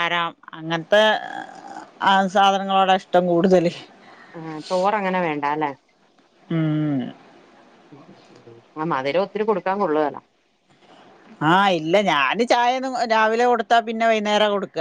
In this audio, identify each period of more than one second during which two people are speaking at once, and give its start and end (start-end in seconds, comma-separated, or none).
none